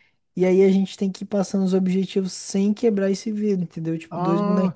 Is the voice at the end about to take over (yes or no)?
yes